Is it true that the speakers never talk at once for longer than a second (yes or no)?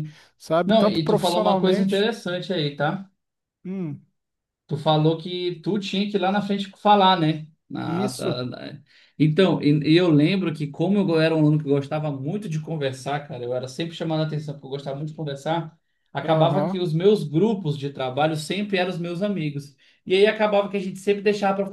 no